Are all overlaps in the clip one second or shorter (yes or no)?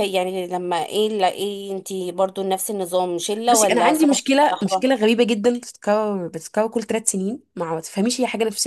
no